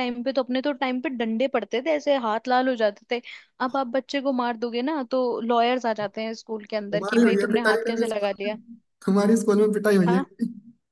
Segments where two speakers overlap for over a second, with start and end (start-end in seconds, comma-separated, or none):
6.9-8.6